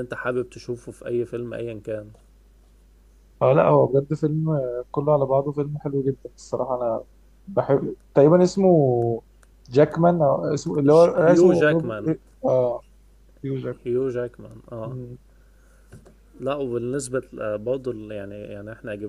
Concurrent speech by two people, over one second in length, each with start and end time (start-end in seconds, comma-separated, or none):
10.9-12.1